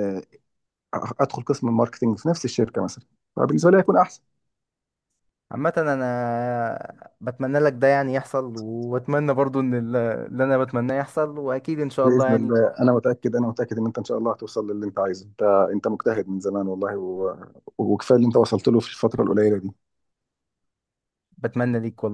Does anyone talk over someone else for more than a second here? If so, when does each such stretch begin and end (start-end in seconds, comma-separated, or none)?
none